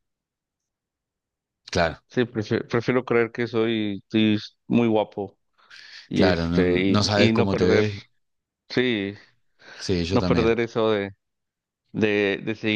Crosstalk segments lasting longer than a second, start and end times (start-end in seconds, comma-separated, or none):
6.1-7.9